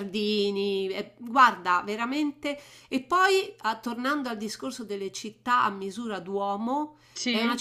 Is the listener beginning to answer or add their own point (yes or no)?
no